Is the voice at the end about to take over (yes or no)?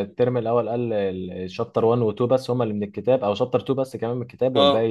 yes